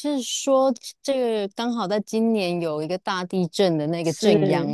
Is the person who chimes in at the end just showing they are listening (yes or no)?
no